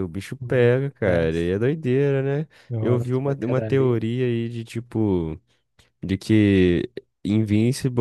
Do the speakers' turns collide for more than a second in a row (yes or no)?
yes